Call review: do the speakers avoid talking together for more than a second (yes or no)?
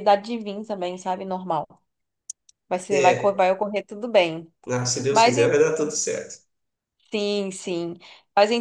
yes